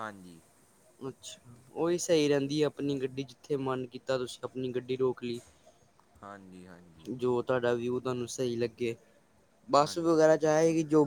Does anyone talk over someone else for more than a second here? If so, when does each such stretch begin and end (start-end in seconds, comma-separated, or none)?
none